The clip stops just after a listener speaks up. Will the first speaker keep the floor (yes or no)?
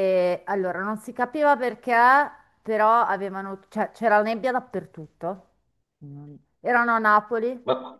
yes